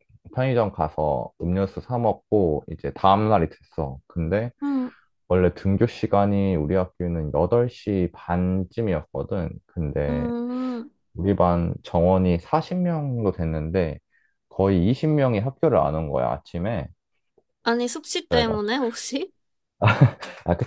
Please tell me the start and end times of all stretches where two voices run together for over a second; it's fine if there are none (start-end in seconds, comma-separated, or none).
none